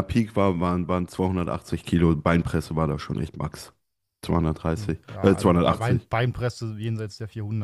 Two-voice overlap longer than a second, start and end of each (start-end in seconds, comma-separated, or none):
4.7-6.1